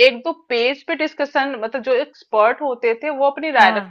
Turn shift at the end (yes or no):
no